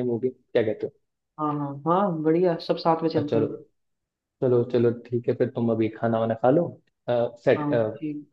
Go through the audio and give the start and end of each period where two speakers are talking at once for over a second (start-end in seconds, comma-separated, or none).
none